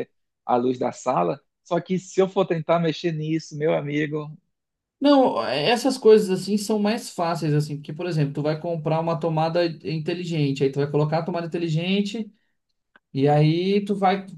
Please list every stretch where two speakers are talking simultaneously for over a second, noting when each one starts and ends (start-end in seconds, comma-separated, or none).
none